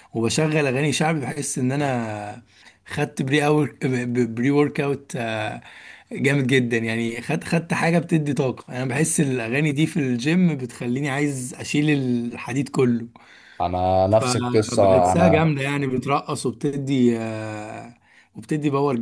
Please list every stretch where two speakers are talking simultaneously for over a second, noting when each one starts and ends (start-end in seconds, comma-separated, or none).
14.1-15.5